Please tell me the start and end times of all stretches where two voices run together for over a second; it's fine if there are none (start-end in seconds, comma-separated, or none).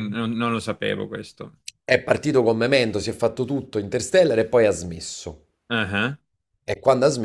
none